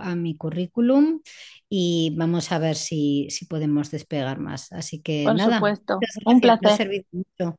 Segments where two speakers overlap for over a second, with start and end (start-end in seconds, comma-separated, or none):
5.2-6.8